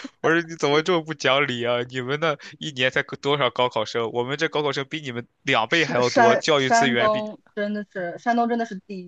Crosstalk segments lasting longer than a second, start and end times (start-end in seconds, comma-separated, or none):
5.7-7.3